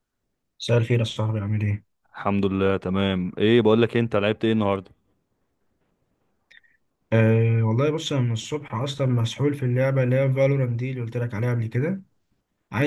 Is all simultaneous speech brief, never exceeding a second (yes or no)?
yes